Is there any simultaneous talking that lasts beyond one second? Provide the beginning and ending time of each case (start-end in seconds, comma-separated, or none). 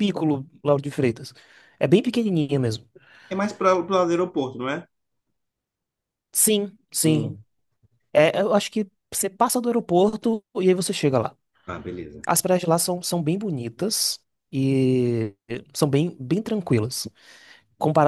none